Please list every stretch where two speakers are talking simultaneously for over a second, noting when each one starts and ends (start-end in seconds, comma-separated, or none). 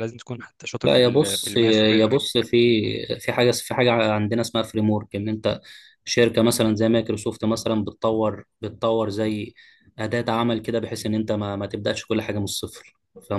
0.8-2.1